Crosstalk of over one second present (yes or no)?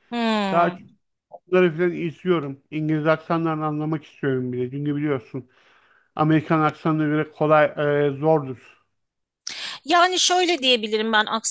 no